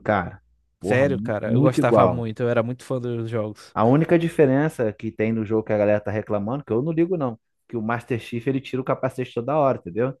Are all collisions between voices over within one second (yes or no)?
no